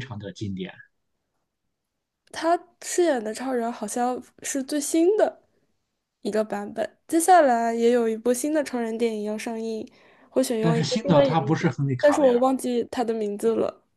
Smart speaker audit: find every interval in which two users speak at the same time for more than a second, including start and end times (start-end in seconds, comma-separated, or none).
10.6-12.4